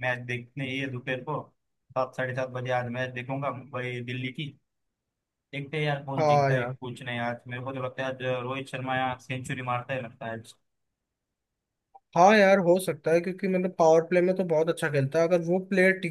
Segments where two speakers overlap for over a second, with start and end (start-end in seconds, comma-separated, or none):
none